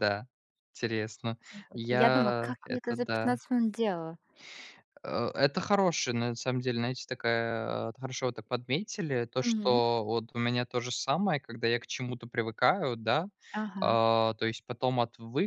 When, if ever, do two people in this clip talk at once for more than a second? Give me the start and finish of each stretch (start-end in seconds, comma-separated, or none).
1.9-3.4